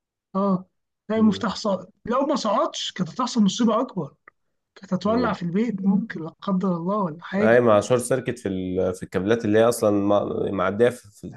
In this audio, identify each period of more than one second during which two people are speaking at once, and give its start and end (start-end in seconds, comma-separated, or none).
none